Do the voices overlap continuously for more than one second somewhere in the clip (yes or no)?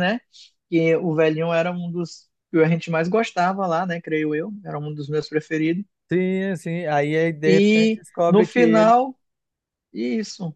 yes